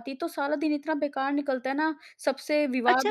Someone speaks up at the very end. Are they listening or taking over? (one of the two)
taking over